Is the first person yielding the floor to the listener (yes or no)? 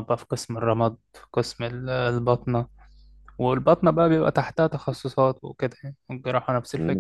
yes